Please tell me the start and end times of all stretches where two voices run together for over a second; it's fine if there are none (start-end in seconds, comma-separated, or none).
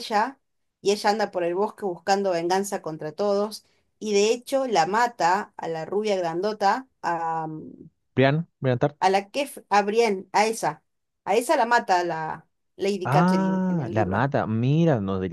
13.0-14.3